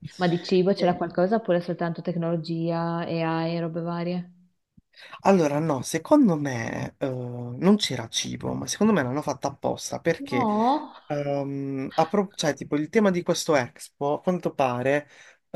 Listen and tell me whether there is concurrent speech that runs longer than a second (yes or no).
no